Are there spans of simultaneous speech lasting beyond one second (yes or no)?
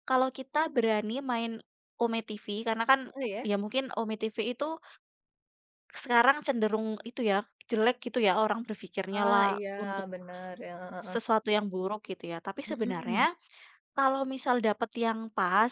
no